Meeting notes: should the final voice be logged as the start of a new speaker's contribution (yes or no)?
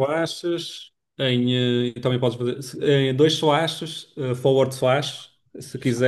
no